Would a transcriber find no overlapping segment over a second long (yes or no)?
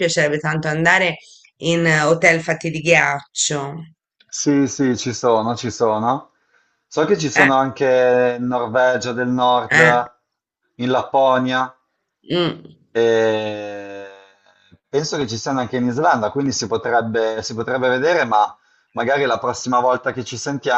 yes